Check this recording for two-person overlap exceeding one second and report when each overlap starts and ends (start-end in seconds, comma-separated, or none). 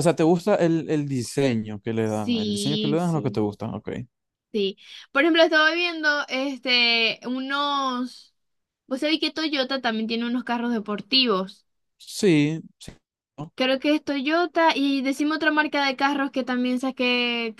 2.0-3.4